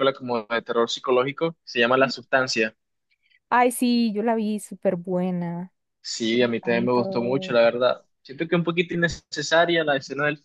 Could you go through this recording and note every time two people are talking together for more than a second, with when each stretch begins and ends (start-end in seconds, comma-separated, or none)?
6.3-7.6